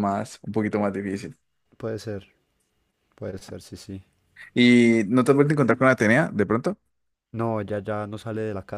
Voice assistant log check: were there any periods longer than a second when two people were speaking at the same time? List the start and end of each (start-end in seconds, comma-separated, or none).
none